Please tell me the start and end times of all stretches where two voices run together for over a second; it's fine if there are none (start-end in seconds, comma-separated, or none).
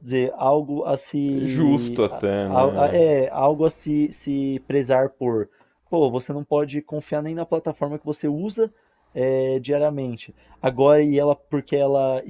1.4-3.0